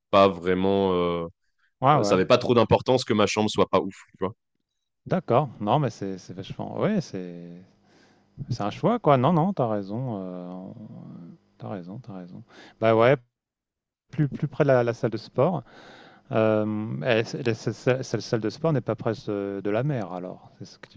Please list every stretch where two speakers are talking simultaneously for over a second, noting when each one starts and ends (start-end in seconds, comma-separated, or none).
none